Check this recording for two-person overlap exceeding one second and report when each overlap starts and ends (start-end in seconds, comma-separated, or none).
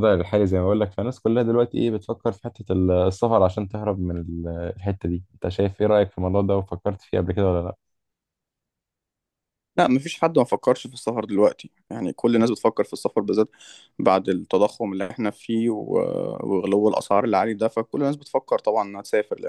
none